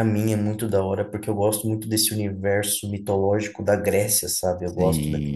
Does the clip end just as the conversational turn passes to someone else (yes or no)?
yes